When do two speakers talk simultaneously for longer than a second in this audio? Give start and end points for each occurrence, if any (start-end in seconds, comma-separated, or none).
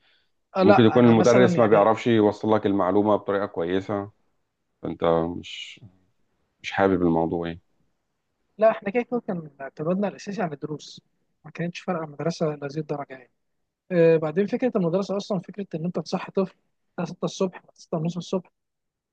0.6-1.9